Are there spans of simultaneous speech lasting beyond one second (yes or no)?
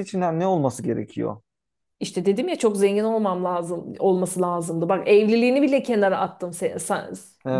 no